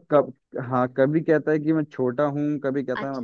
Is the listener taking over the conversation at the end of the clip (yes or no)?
yes